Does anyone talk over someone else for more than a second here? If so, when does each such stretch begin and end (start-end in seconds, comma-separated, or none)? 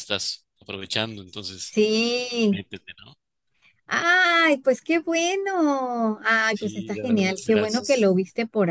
6.5-8.1